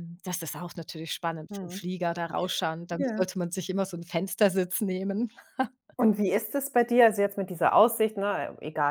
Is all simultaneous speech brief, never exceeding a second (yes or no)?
yes